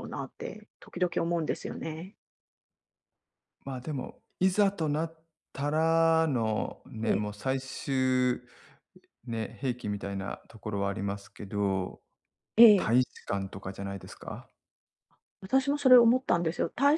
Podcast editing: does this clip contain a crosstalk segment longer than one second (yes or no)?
no